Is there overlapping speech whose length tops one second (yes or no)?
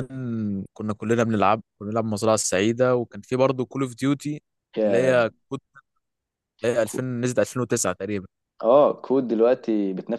no